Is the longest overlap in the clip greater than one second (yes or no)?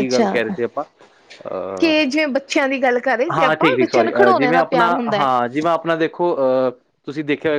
yes